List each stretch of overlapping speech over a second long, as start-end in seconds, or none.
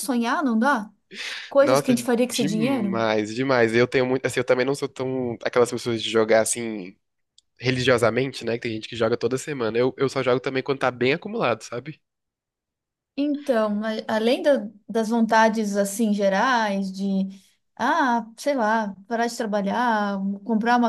1.6-3.0